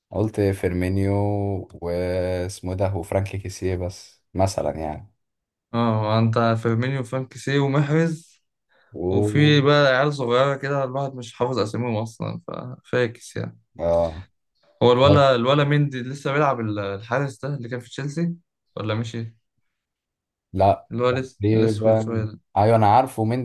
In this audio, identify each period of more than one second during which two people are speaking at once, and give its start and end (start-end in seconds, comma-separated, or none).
20.9-22.4